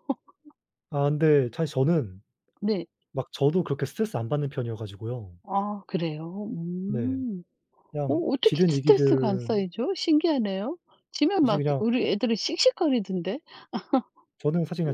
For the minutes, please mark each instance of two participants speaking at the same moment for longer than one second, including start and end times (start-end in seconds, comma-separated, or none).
8.1-9.7